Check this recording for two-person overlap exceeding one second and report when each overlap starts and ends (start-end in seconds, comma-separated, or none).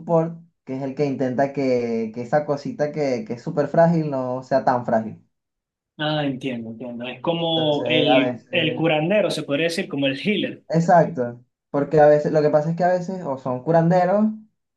7.5-8.8